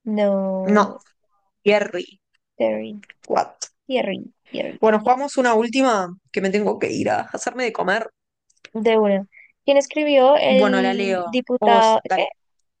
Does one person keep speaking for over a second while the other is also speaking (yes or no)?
yes